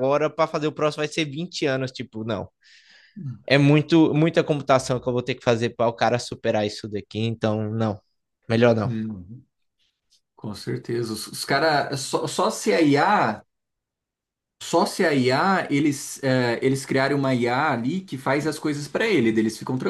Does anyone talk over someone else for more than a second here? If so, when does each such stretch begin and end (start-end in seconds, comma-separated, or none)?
none